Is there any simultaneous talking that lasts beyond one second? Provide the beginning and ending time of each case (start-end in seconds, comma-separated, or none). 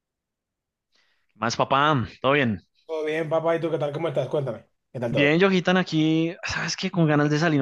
none